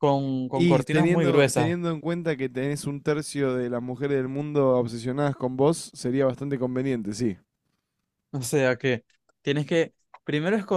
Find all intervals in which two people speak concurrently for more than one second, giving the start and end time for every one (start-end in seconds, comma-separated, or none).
0.5-1.7